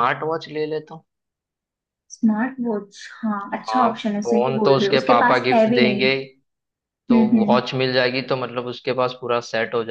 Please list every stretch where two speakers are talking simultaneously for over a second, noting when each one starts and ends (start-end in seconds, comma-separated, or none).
3.7-6.1